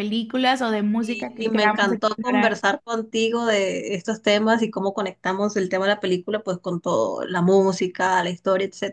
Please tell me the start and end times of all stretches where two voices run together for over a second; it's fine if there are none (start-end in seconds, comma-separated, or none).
1.0-2.6